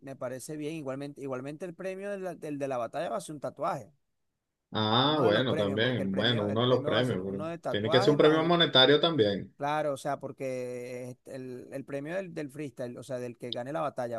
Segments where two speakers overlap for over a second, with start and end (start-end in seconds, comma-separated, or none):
5.0-8.6